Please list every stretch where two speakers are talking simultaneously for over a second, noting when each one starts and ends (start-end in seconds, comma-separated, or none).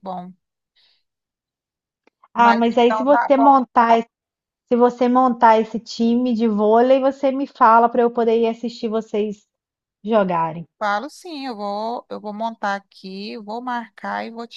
2.4-3.6